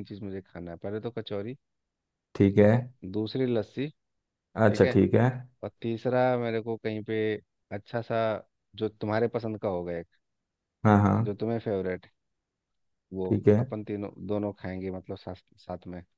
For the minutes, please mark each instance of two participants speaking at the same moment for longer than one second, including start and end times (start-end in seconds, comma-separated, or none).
none